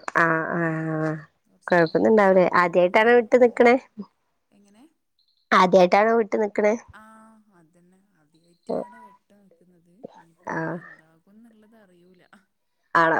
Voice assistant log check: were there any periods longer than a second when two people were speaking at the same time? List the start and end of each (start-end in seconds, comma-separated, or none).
1.7-3.6